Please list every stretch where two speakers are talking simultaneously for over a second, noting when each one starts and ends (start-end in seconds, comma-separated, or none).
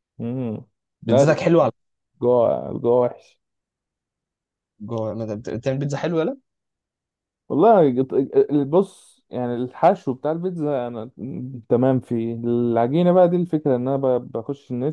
none